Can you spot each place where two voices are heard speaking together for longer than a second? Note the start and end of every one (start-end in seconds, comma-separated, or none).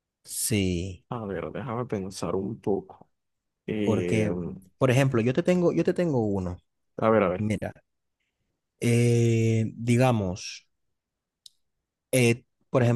none